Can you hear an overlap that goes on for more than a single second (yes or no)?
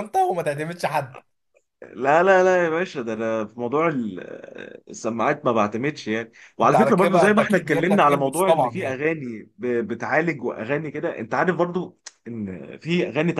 yes